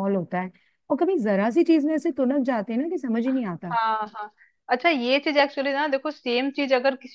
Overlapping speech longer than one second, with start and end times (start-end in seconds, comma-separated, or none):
none